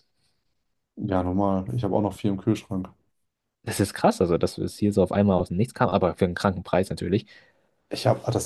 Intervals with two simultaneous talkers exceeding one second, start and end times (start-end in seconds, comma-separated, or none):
none